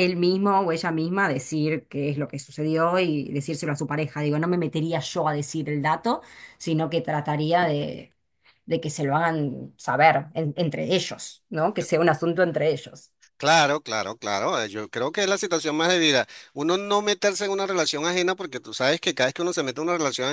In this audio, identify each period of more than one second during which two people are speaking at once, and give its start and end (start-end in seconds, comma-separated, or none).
none